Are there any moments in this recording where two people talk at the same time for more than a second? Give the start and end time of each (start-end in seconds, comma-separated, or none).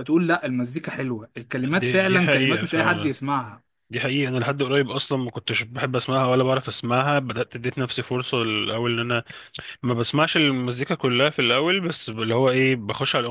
1.8-3.2